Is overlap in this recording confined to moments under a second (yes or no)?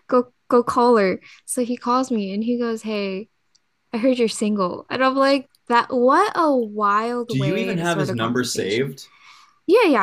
no